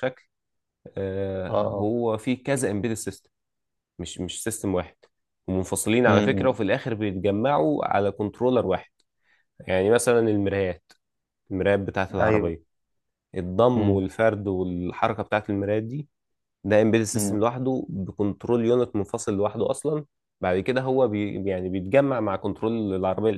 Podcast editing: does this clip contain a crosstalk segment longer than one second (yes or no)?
no